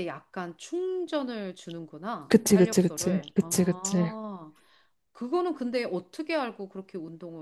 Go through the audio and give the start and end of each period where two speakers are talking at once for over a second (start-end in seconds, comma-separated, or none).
2.3-4.1